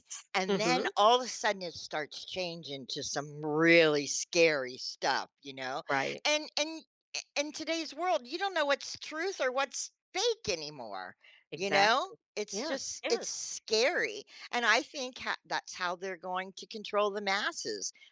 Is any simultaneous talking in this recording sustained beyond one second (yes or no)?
yes